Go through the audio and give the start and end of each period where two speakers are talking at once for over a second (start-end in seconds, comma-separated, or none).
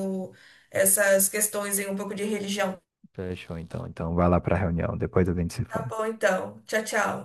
none